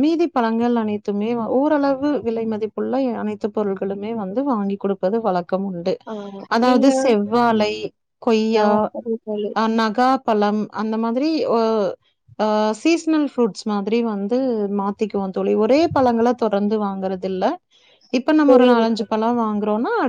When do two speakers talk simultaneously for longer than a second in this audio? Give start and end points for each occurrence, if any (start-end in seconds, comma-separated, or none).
none